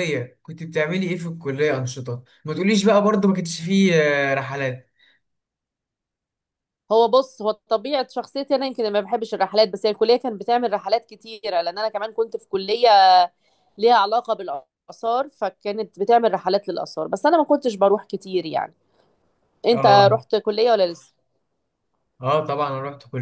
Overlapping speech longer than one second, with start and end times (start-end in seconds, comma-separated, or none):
none